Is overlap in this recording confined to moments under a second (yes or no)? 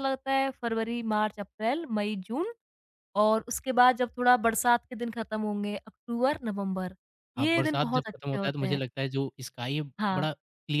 no